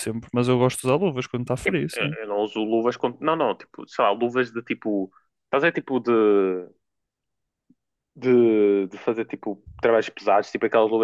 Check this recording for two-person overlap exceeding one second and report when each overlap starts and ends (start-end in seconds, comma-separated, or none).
none